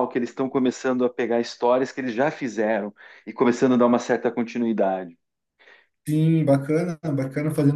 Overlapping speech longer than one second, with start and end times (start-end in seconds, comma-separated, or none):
none